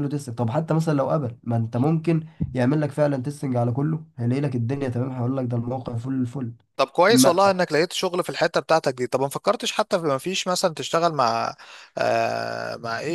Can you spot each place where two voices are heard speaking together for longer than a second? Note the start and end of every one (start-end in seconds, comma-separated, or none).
none